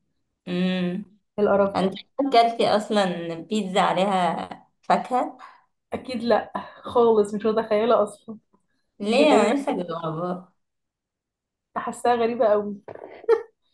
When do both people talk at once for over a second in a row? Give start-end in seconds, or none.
none